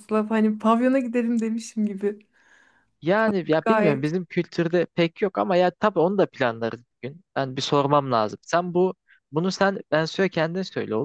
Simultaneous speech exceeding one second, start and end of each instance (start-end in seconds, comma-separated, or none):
none